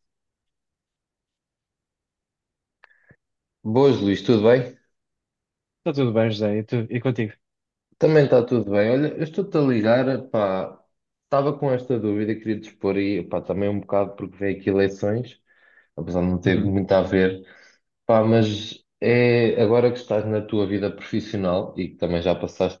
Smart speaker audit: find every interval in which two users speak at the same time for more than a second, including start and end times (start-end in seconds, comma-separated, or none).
none